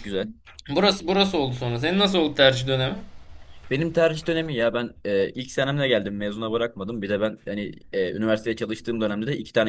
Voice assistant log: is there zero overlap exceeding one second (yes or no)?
yes